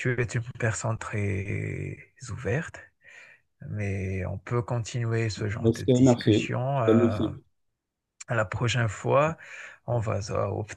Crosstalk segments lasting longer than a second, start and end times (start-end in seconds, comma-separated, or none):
5.6-7.2